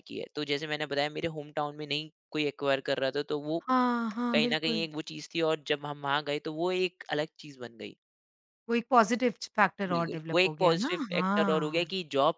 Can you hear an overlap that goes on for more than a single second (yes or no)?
yes